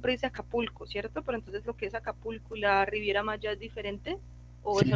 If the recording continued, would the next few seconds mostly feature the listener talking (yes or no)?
yes